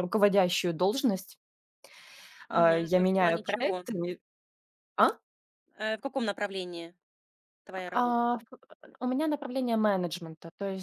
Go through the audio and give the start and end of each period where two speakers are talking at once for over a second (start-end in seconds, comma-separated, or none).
2.5-3.8